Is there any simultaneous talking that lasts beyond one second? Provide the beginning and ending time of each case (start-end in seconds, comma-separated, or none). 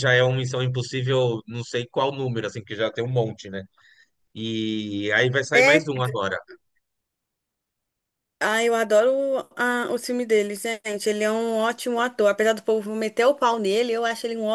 none